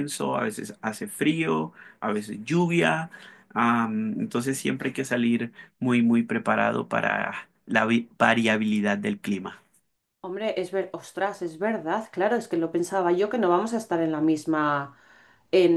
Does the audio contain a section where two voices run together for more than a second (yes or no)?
no